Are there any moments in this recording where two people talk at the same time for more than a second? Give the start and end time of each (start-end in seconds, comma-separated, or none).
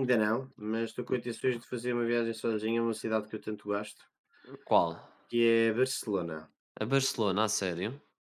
none